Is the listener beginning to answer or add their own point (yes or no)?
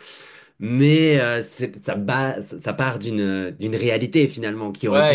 yes